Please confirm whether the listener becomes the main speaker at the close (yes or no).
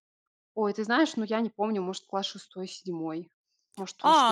yes